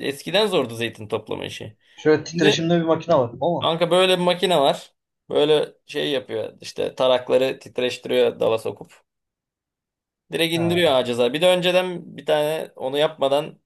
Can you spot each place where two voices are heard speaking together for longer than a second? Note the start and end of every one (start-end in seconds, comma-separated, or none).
none